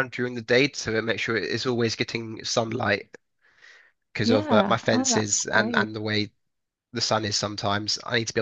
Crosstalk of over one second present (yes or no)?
yes